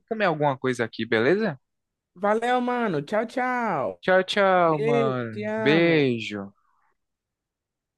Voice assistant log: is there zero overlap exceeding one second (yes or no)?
no